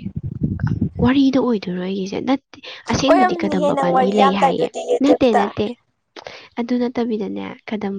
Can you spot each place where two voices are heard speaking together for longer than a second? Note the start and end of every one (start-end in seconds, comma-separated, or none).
3.1-5.4